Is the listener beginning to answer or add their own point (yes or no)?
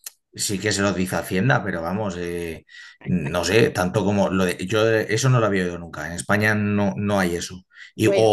no